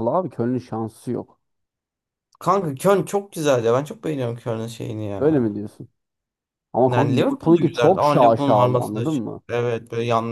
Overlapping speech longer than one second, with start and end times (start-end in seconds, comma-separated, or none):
6.9-9.4